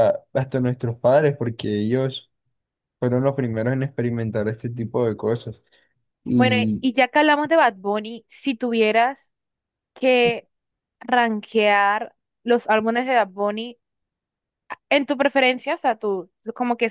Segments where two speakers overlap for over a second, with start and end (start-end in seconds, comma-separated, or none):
none